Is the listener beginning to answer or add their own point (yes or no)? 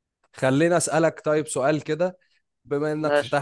no